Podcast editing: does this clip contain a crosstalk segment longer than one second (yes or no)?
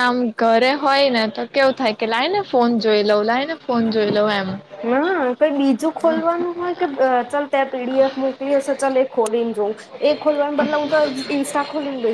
no